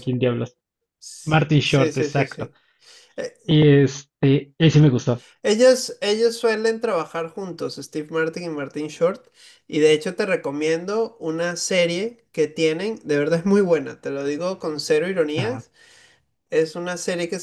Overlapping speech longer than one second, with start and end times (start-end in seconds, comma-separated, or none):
1.2-2.5